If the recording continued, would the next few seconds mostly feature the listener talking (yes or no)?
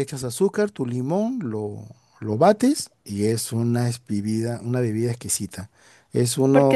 yes